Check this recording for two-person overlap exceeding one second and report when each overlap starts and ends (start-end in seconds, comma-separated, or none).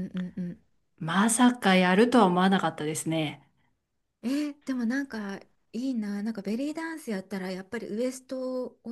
none